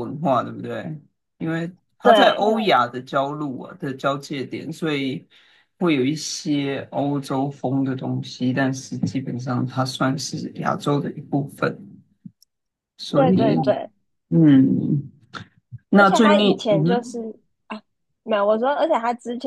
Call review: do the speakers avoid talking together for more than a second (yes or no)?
no